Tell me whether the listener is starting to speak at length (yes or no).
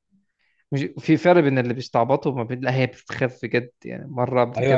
yes